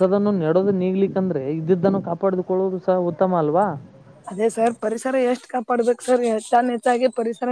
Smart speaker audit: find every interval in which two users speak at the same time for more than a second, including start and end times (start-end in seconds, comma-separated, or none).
none